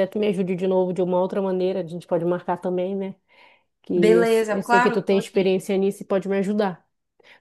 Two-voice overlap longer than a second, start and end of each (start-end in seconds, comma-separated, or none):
3.9-5.5